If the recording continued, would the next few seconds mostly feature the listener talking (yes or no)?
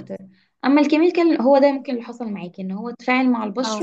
no